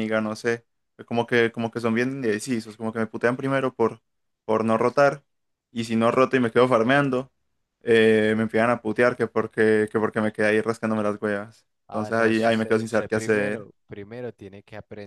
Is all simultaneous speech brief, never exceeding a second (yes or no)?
no